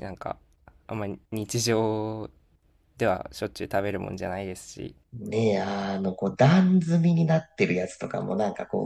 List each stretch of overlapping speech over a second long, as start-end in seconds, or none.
none